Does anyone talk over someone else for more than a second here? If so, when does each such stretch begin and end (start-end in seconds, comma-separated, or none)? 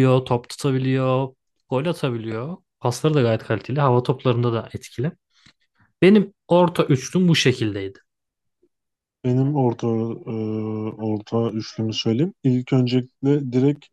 none